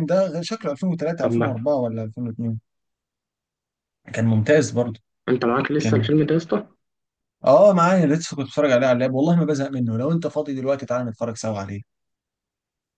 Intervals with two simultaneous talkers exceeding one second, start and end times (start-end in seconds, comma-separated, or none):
none